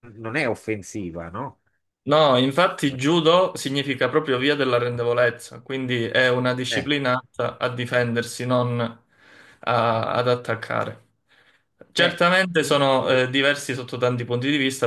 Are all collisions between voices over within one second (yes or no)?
yes